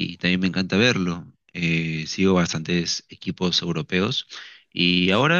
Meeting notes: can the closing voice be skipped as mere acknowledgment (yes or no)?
yes